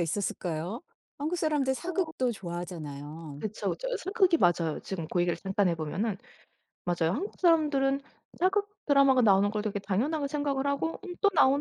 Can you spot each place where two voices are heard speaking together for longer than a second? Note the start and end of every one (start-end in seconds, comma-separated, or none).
none